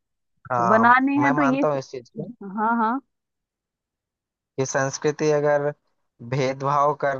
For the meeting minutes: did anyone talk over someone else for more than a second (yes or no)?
yes